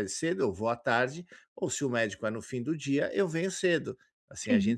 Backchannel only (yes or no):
yes